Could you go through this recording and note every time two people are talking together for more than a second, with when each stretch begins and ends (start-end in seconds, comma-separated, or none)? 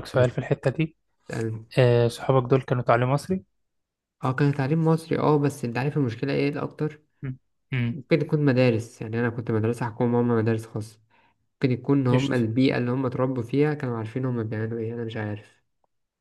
none